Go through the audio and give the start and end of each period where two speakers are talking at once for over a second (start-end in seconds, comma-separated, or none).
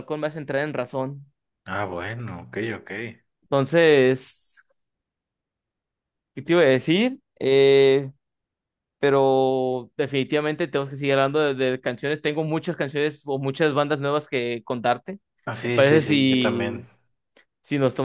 15.6-16.9